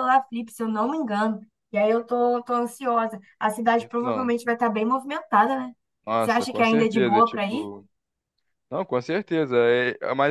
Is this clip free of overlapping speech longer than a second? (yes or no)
no